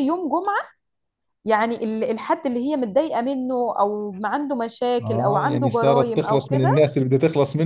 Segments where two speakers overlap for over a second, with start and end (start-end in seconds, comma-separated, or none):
5.0-6.7